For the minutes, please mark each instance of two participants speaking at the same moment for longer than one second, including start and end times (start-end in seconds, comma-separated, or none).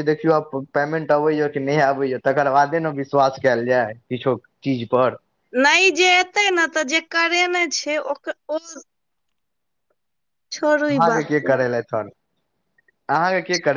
none